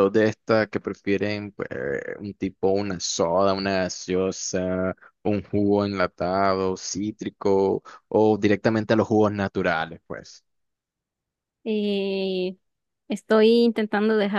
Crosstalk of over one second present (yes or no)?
no